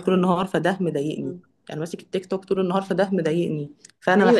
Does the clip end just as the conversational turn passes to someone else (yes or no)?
yes